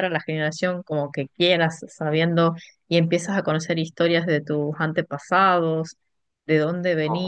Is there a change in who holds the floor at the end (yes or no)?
no